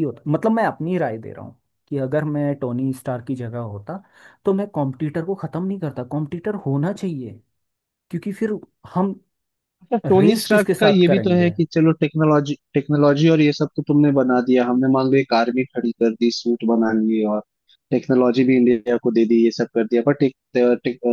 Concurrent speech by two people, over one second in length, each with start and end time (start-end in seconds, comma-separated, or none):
10.2-11.5